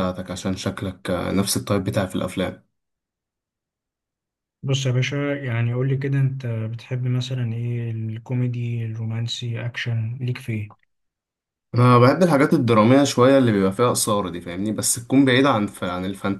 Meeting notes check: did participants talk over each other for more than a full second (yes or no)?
no